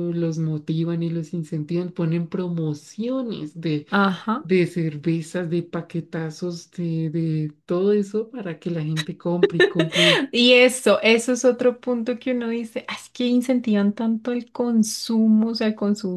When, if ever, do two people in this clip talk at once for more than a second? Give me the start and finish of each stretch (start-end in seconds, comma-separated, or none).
none